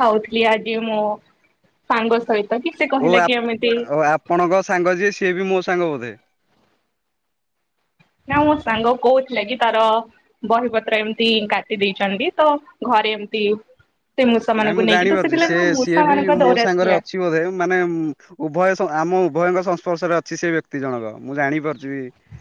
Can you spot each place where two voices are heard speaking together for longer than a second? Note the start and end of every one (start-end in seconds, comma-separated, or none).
14.6-17.0